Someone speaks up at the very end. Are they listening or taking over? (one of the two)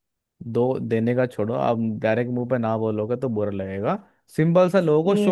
listening